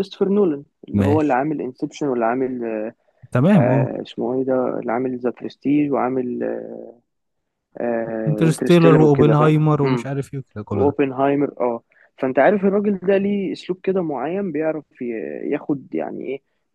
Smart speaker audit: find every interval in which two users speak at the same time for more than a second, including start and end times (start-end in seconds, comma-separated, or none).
8.3-9.5